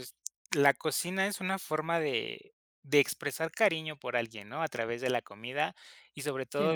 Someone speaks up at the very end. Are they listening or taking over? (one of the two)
listening